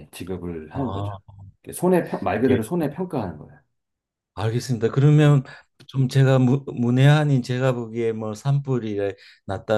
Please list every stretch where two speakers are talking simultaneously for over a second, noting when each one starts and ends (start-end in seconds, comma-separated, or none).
none